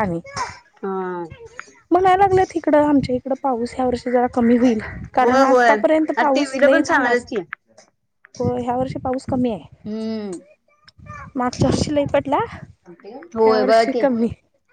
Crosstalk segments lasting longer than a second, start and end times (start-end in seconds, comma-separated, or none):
5.2-7.2